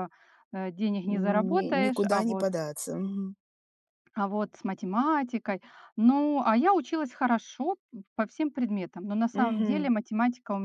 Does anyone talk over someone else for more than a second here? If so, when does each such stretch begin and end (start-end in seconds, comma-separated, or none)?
1.1-2.5